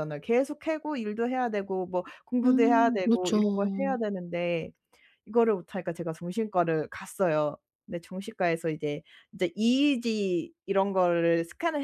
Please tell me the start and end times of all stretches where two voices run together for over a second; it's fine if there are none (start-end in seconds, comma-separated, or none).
2.4-4.0